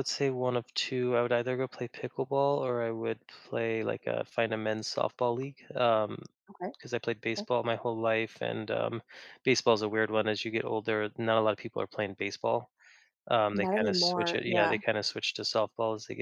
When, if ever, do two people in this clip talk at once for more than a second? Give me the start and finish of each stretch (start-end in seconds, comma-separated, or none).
13.6-14.8